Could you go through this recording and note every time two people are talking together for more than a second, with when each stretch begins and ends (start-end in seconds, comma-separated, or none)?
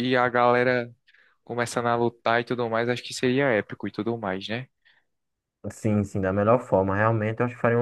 none